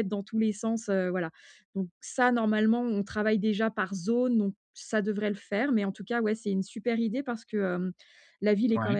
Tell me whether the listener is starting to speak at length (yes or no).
no